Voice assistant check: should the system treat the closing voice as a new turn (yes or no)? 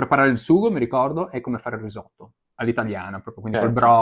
no